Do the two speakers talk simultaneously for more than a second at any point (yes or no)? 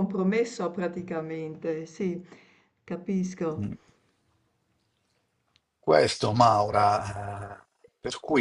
no